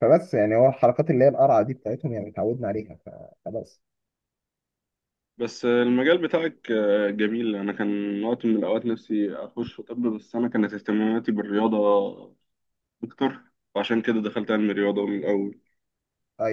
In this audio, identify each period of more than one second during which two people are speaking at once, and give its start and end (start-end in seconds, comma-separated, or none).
none